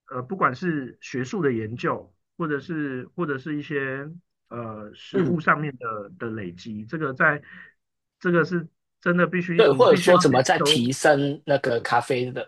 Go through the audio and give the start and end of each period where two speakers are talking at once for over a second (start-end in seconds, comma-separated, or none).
9.6-10.9